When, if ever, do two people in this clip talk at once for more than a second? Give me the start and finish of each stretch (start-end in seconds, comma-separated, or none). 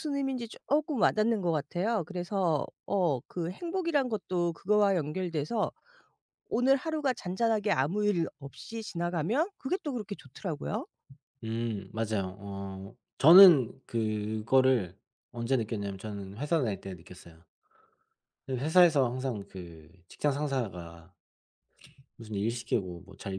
none